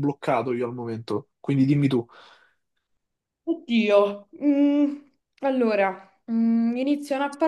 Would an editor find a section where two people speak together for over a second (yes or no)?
no